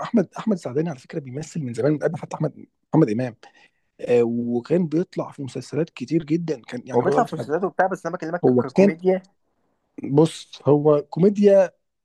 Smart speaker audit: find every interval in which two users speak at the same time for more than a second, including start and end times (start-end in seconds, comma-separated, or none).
none